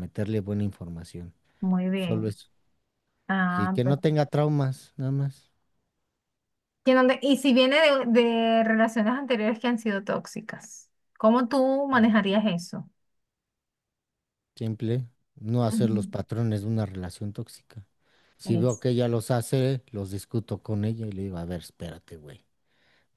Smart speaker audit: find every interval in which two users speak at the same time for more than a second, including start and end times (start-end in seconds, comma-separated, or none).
none